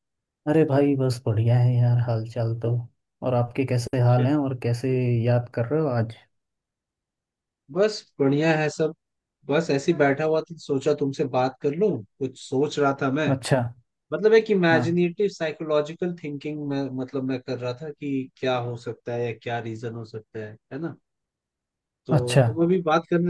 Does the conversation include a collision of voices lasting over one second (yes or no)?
no